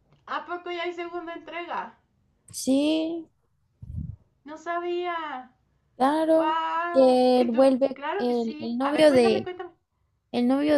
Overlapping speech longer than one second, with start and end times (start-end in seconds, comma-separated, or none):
6.3-9.5